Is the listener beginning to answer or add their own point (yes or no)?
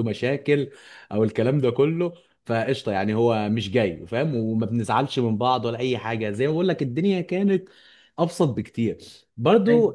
no